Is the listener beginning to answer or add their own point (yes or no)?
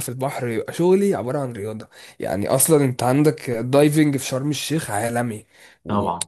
no